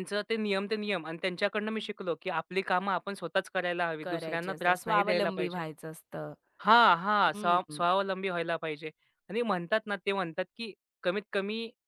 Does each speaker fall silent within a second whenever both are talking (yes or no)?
no